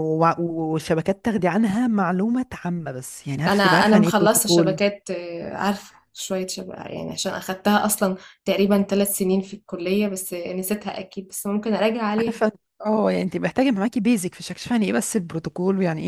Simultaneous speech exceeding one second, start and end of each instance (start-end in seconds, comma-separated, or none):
3.5-4.8